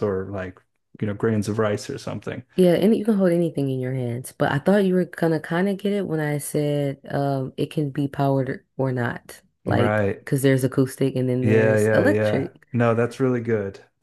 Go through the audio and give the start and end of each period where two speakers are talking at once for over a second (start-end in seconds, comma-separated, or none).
11.4-12.6